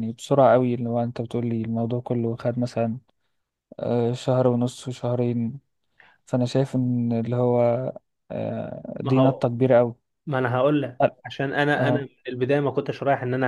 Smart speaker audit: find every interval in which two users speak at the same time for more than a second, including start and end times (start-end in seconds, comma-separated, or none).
none